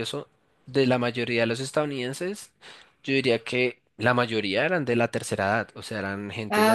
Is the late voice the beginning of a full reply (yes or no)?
no